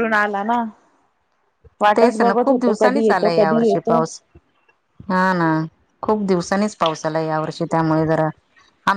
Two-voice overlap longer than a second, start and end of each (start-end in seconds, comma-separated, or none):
2.0-4.0